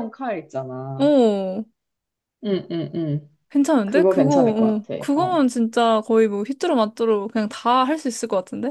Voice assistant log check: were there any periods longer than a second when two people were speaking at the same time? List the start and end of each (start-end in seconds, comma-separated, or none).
3.8-5.4